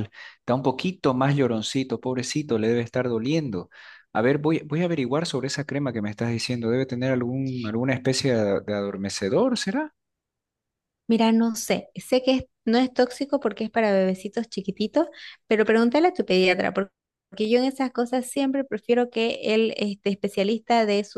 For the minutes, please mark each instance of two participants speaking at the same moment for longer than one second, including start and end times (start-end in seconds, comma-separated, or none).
none